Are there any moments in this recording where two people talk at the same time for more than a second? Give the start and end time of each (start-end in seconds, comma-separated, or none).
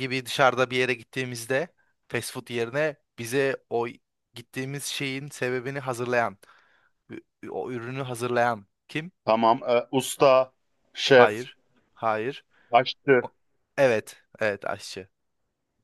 none